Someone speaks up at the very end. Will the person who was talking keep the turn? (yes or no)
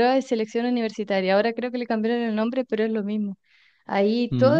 yes